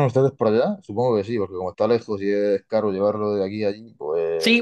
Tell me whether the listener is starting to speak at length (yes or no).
yes